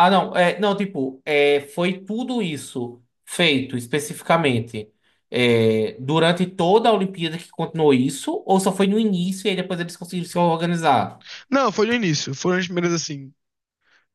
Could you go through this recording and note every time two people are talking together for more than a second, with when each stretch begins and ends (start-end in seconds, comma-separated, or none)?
none